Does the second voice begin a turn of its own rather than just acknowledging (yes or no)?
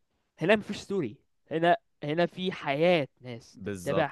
yes